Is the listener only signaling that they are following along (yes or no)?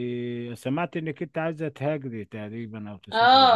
no